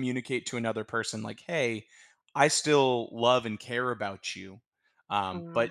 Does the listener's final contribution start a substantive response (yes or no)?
no